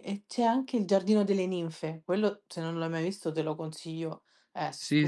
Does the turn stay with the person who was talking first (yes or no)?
no